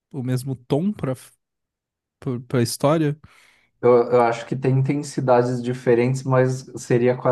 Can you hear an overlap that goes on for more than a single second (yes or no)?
no